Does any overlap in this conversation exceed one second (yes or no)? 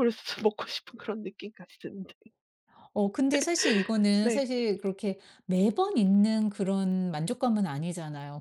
no